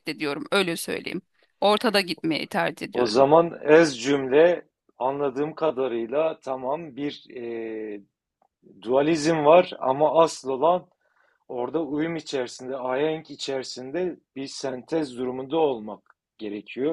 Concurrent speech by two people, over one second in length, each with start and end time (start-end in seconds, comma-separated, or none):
none